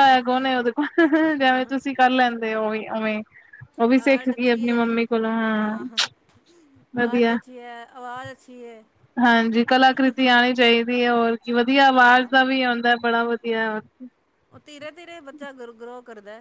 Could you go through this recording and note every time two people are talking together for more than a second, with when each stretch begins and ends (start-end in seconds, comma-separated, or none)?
none